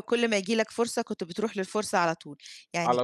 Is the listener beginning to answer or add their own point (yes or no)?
no